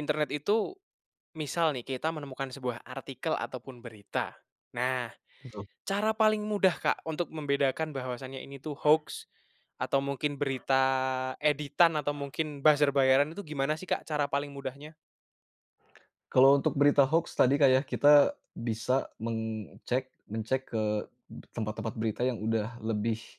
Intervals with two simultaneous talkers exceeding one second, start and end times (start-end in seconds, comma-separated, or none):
none